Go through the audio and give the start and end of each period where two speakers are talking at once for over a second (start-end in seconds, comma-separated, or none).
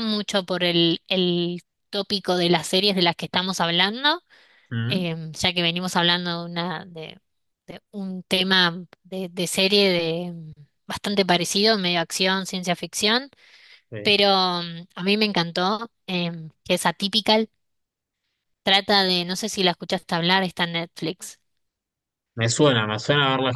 none